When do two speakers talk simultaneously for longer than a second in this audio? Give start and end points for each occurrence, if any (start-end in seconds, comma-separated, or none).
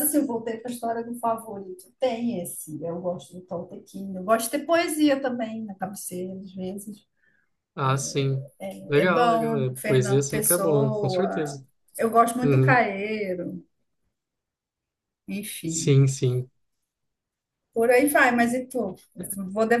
8.9-11.6